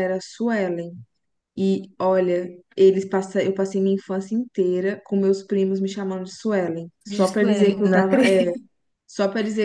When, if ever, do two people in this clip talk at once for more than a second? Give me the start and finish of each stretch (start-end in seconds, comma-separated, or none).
7.1-8.4